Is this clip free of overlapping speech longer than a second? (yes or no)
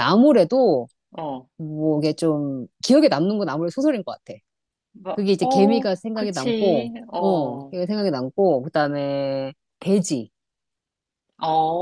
no